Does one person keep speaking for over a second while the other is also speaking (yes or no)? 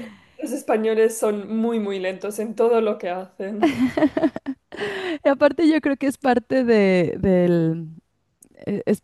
no